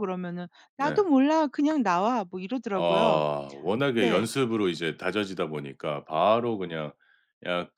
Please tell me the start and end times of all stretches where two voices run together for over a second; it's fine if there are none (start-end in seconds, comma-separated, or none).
none